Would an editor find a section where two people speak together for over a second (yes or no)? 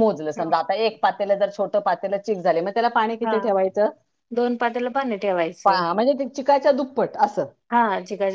no